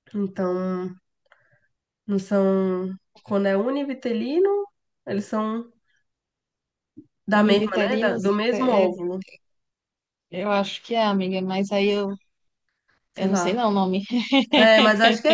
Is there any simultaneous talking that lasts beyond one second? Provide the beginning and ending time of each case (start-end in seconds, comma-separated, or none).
7.3-8.9